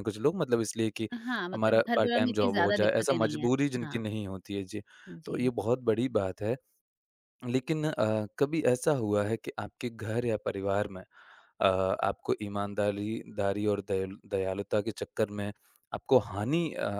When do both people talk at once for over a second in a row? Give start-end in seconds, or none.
1.5-4.0